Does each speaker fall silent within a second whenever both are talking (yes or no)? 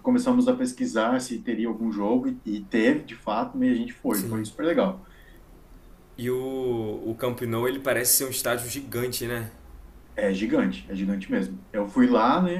yes